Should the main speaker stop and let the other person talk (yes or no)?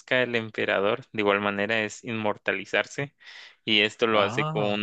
no